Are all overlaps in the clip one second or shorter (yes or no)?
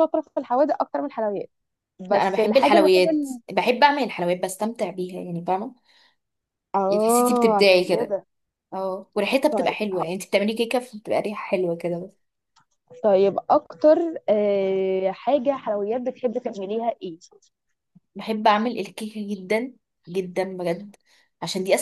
no